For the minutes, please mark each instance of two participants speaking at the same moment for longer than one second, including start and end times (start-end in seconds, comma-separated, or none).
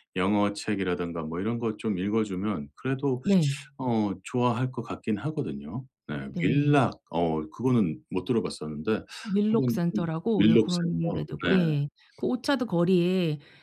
9.5-11.2